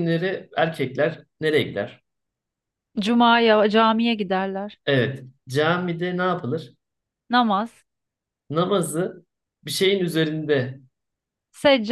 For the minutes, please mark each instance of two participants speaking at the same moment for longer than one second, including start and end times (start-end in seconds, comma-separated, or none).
none